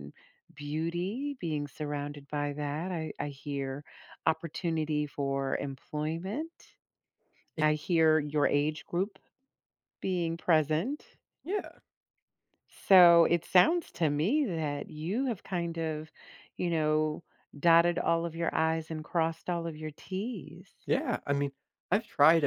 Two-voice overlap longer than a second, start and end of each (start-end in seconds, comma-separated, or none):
none